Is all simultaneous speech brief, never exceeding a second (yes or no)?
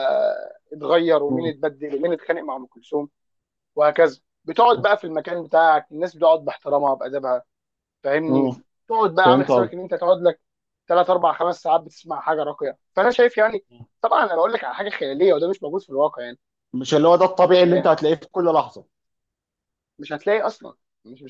yes